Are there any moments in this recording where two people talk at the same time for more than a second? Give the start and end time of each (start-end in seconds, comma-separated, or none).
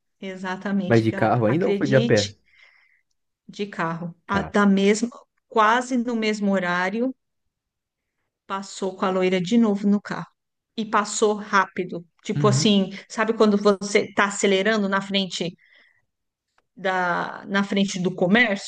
0.9-2.4